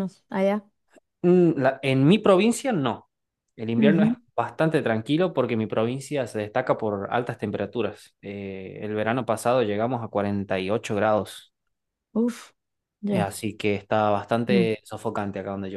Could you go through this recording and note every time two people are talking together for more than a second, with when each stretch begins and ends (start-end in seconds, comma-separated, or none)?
none